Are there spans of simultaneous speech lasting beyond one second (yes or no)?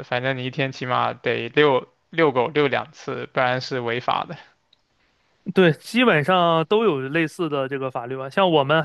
no